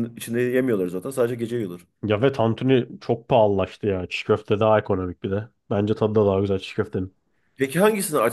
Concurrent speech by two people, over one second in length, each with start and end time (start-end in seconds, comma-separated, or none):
none